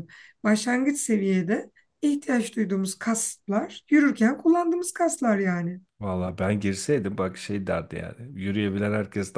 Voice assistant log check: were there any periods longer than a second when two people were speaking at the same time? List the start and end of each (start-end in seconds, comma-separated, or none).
none